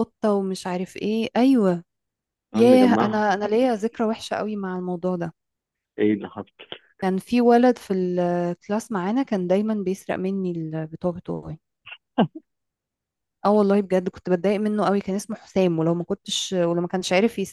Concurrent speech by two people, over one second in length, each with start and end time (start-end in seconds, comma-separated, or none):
2.5-4.0